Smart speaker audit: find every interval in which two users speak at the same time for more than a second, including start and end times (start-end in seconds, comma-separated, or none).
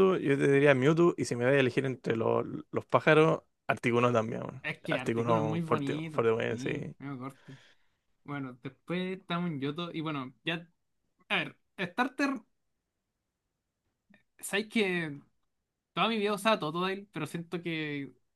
4.6-7.0